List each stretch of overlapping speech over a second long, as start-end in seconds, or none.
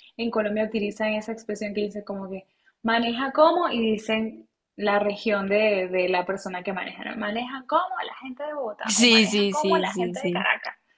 8.8-10.5